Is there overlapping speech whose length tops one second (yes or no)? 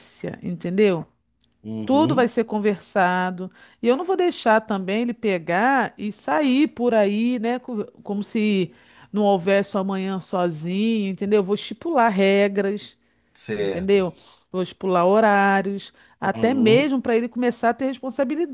no